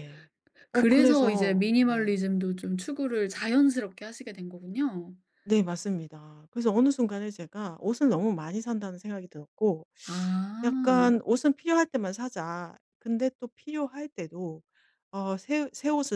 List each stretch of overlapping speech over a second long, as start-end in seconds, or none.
0.7-2.2